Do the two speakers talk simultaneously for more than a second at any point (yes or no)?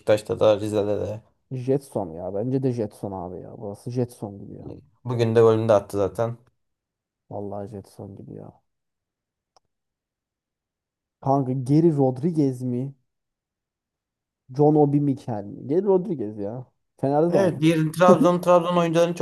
no